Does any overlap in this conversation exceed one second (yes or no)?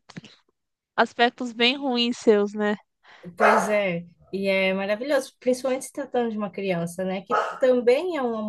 no